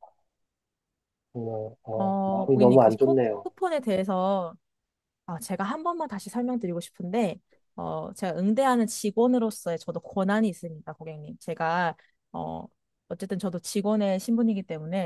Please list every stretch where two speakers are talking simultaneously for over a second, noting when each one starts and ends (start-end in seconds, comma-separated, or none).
1.9-3.5